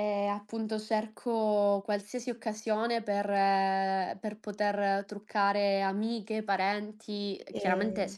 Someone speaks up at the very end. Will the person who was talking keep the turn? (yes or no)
yes